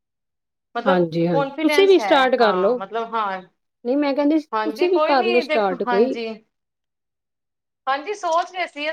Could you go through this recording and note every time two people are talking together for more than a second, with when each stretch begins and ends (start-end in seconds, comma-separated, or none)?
0.9-2.8, 4.5-6.1